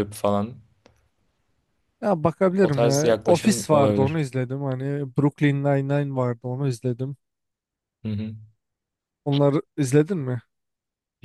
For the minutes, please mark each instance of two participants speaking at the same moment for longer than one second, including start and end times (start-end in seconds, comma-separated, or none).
2.6-4.2